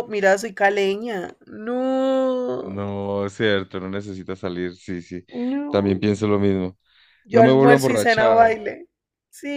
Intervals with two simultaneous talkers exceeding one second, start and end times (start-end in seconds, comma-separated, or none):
7.3-8.6